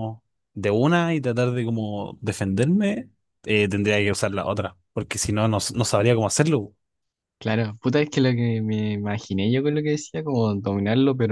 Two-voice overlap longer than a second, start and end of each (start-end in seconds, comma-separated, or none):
none